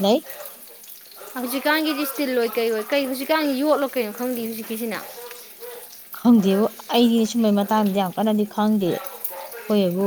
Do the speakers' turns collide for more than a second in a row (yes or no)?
no